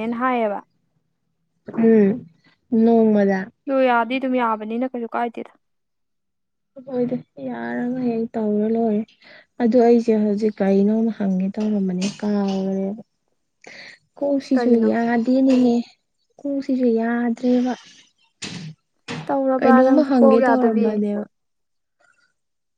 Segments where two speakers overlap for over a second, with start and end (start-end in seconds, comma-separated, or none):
19.6-20.9